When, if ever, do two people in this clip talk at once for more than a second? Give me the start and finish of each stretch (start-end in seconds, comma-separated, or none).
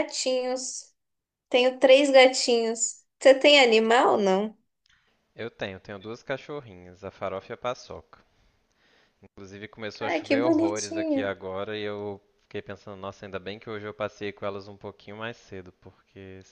10.0-11.3